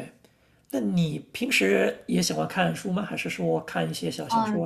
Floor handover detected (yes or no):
yes